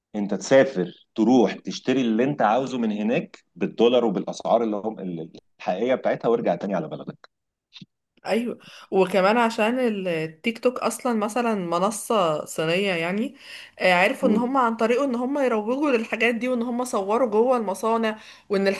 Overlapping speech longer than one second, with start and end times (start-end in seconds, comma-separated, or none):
none